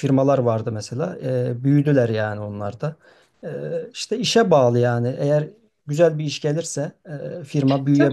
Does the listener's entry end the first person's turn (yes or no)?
yes